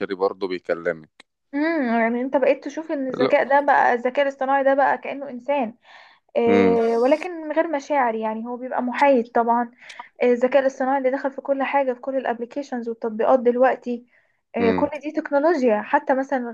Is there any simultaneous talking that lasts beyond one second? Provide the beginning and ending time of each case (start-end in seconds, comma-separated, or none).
none